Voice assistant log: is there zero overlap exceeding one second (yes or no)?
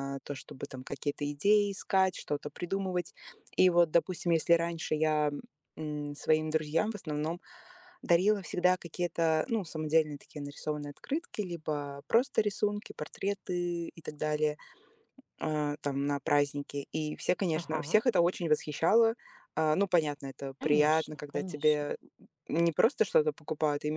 no